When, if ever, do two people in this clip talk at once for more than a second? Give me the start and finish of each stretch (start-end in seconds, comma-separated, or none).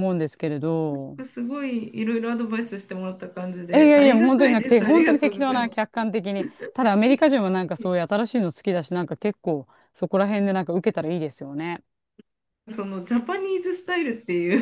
3.7-6.0